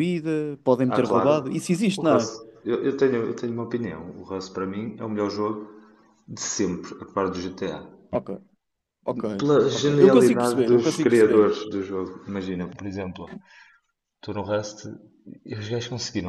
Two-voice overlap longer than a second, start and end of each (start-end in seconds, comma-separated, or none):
9.7-11.5